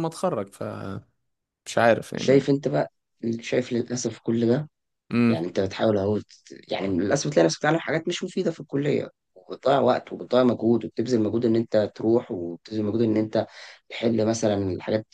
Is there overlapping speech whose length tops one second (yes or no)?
no